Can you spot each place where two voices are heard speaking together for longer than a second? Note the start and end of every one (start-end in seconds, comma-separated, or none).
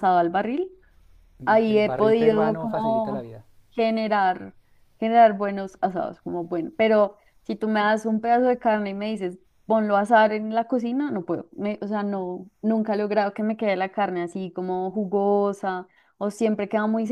1.4-3.3